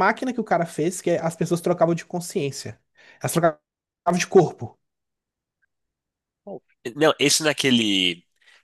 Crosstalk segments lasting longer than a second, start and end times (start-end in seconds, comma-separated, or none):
none